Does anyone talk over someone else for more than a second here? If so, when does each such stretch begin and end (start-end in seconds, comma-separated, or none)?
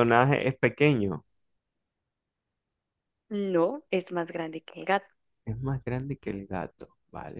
none